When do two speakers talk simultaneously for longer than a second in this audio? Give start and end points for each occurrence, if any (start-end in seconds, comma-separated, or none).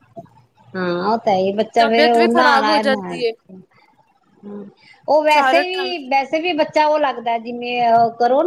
1.8-3.2